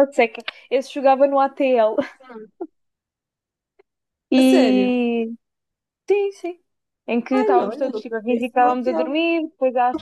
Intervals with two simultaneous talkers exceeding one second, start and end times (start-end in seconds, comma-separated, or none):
7.3-9.1